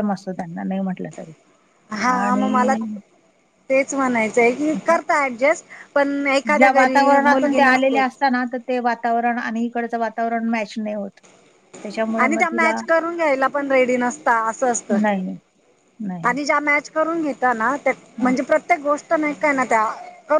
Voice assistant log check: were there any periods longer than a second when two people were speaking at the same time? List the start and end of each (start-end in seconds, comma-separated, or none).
none